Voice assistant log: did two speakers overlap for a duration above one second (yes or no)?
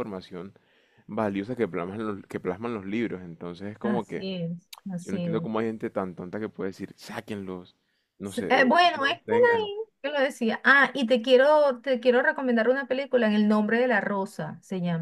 yes